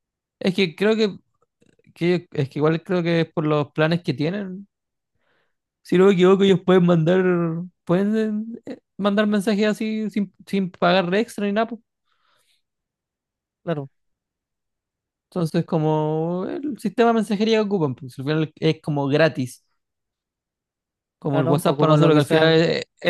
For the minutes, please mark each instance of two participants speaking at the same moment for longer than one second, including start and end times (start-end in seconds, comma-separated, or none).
21.3-22.6